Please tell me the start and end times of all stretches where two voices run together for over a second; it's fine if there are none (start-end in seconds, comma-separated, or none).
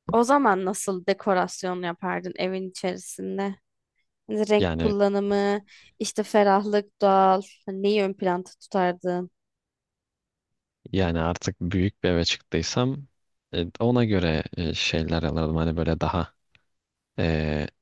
none